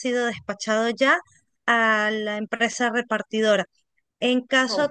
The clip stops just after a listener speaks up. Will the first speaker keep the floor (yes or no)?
yes